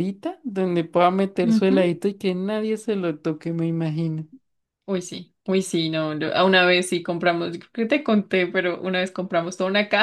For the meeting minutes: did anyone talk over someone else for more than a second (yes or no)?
no